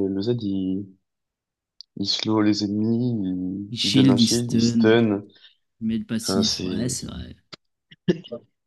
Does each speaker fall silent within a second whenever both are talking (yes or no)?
no